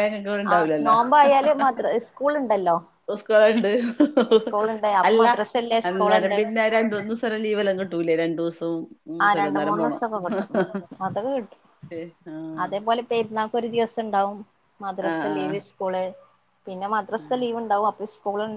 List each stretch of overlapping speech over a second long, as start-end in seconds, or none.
none